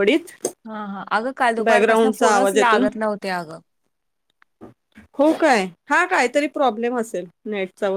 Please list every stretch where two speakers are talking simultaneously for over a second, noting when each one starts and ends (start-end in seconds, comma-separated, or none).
1.6-2.9